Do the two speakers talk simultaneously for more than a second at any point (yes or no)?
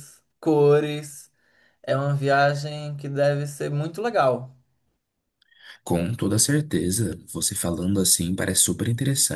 no